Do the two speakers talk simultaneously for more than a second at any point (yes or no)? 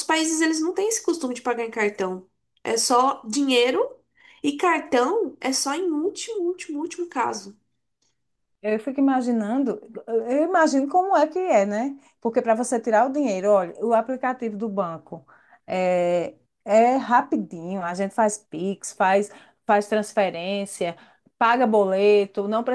no